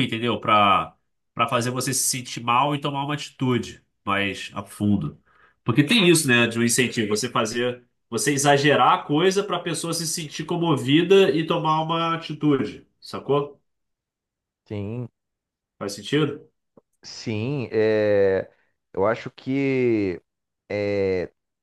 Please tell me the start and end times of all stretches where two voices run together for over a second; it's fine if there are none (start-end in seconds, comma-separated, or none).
none